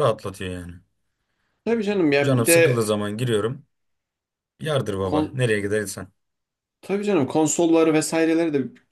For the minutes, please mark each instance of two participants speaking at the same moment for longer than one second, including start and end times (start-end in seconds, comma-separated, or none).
none